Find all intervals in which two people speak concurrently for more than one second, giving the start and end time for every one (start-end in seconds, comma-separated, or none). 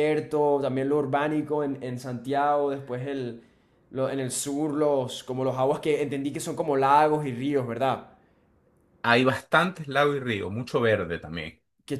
none